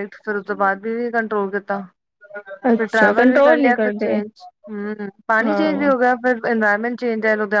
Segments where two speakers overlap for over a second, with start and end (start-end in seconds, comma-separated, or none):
2.8-4.2